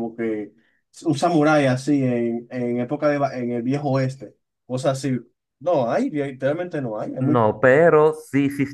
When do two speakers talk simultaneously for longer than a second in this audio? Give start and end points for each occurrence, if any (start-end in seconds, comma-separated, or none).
none